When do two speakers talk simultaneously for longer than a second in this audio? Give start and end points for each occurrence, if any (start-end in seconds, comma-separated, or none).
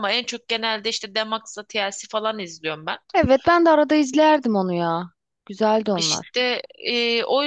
none